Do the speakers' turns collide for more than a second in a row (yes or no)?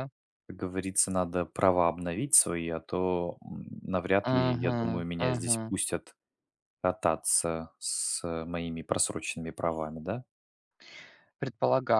yes